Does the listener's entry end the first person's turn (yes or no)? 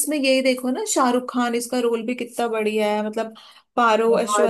no